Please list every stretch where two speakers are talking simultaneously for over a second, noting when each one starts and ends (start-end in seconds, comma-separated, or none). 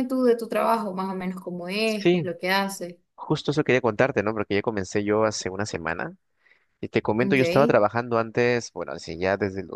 none